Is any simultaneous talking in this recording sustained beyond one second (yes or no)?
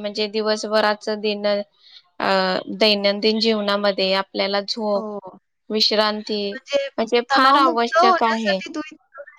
yes